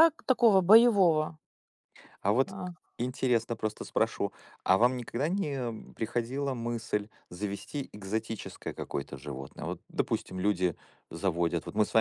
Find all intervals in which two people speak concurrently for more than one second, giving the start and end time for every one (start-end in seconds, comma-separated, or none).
none